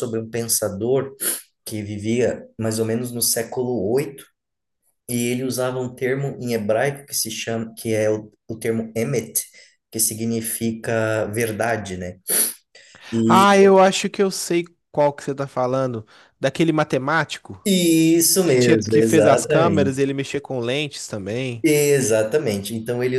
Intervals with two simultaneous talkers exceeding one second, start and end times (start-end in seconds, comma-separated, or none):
18.4-20.0